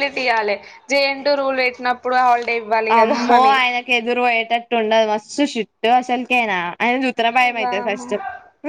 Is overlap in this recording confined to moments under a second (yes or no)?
yes